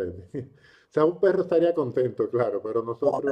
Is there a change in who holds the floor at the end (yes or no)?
yes